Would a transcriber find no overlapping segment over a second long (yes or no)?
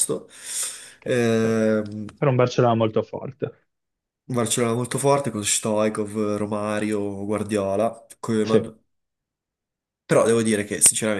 yes